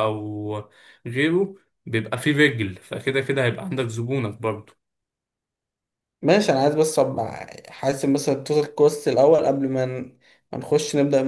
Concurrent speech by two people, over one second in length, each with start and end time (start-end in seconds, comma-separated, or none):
none